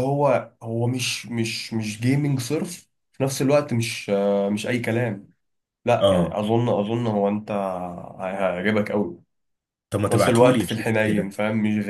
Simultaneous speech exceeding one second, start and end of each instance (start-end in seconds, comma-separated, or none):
10.1-11.4